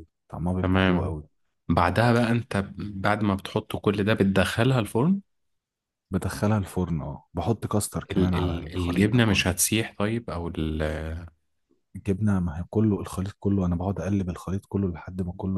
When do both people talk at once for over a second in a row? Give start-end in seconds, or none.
8.1-9.5